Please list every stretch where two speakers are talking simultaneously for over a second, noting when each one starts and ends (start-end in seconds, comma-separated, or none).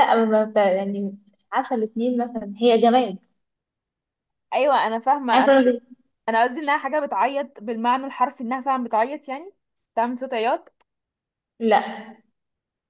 none